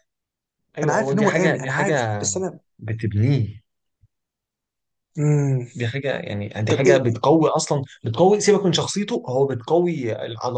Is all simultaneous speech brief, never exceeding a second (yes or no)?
no